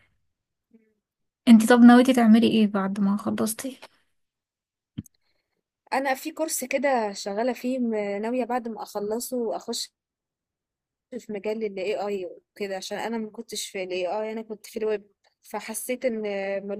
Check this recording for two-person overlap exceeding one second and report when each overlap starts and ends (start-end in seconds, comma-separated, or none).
none